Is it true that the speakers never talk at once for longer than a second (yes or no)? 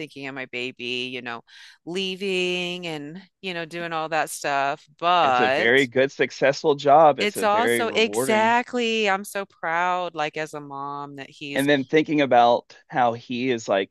no